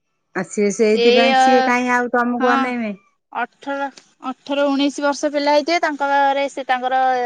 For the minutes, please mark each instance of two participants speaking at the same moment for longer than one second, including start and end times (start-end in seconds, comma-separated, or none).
none